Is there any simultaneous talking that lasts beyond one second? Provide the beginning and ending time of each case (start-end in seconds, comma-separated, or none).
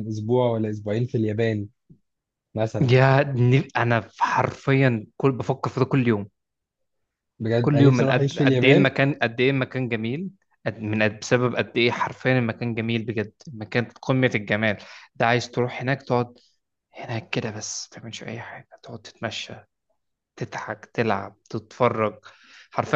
7.6-8.9